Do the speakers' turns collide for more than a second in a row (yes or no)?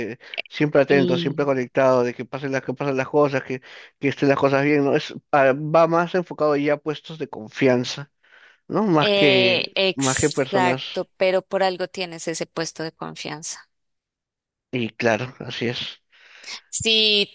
yes